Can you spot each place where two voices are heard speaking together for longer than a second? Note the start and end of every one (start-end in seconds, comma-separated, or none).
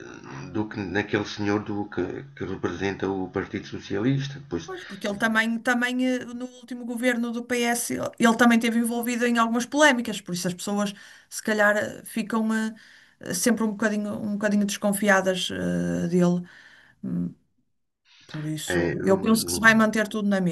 18.7-19.9